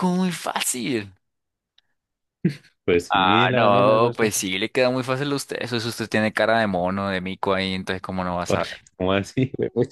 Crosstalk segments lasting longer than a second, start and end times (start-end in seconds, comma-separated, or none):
3.1-4.3